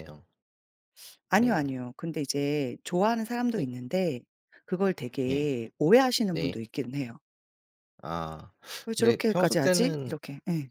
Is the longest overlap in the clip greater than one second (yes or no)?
yes